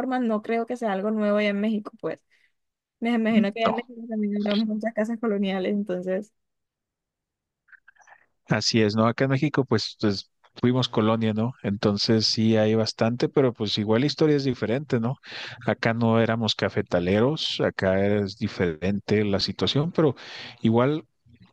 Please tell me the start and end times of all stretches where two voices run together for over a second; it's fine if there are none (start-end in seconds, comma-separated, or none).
none